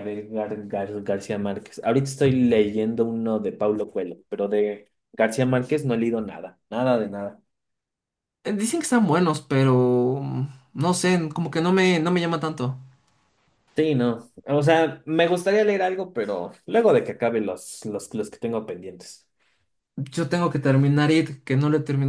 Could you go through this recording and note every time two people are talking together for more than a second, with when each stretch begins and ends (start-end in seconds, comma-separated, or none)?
none